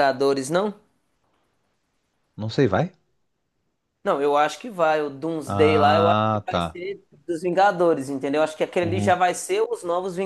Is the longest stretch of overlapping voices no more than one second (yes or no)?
no